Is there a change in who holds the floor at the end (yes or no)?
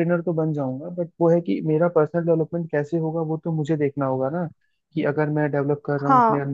no